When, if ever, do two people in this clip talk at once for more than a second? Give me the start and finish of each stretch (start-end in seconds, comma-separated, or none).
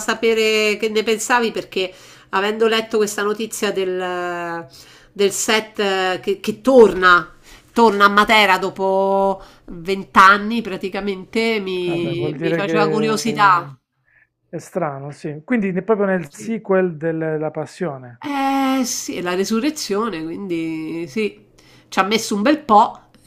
11.8-13.7